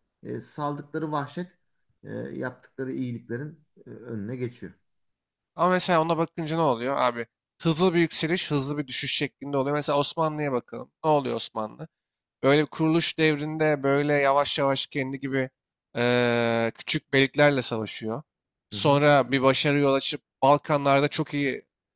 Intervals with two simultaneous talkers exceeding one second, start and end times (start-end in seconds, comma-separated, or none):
none